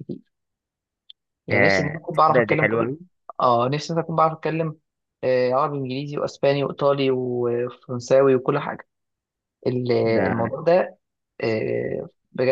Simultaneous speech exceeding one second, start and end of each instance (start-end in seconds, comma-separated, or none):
1.5-2.9